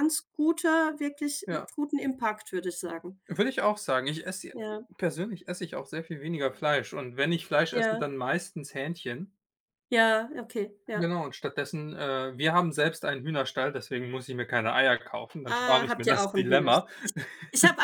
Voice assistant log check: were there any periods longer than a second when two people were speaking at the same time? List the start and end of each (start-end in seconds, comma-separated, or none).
15.5-16.9